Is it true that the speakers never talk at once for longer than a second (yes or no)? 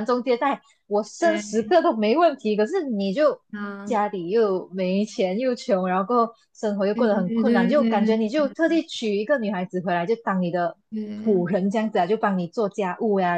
no